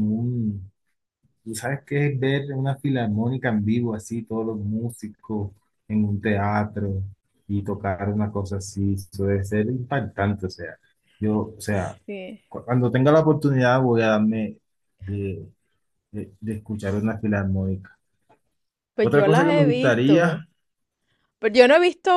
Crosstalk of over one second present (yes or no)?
yes